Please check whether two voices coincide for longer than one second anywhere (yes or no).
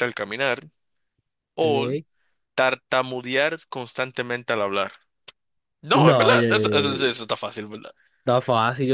yes